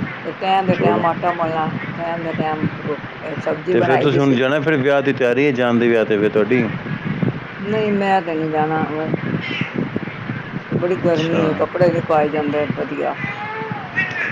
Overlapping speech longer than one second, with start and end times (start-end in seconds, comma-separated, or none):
none